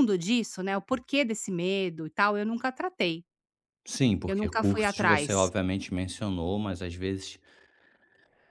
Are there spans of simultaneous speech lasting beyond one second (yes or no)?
yes